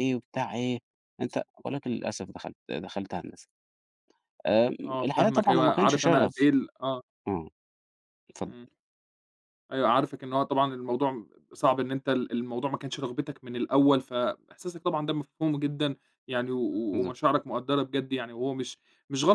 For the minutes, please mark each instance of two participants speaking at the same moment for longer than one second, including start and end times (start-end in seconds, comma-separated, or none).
4.8-6.5